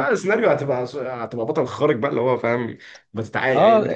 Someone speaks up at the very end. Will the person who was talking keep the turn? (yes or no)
no